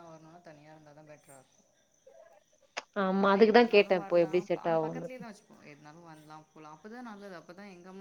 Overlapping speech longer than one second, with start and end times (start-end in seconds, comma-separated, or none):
3.3-5.1